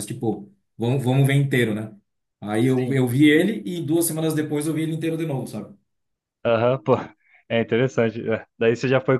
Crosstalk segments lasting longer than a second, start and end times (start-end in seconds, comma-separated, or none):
none